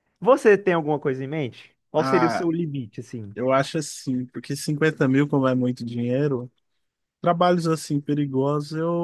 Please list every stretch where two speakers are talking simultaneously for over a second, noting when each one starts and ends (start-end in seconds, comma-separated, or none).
none